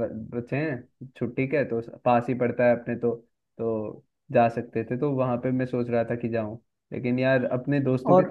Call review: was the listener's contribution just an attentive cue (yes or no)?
yes